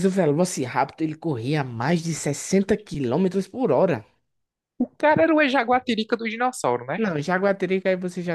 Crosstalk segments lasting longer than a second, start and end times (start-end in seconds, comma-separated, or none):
none